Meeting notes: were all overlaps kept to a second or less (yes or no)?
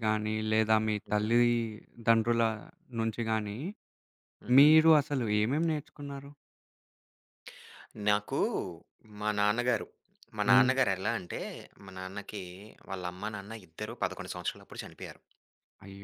yes